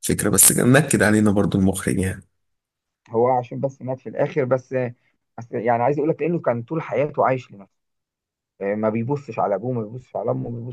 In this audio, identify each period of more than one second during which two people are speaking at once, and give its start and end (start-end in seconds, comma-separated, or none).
none